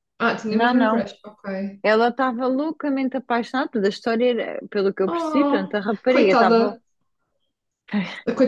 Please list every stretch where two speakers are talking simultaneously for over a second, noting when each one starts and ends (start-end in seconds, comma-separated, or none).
5.1-6.8